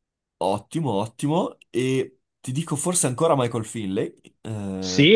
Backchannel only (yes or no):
no